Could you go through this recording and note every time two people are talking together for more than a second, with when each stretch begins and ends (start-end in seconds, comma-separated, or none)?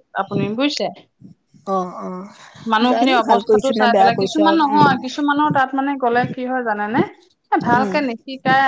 2.9-4.9